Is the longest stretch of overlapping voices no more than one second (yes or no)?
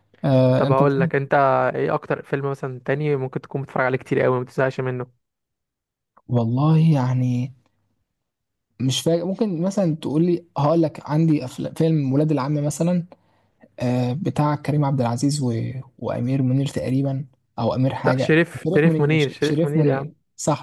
no